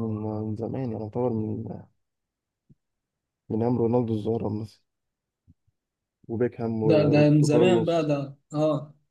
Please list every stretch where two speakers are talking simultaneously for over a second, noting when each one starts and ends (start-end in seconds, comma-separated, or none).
6.8-8.1